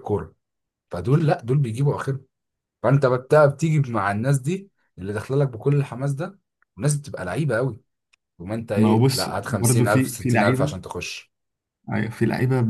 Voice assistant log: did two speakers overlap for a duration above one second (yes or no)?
yes